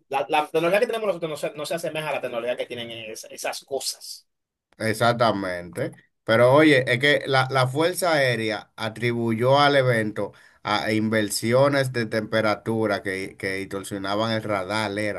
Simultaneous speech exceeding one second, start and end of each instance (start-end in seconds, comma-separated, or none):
none